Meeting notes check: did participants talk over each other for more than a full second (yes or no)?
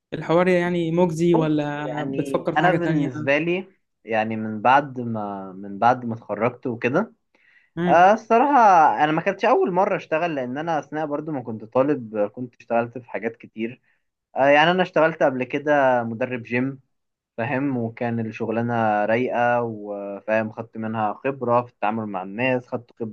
yes